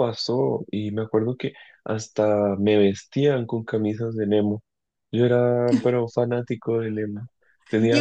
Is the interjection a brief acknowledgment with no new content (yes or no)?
no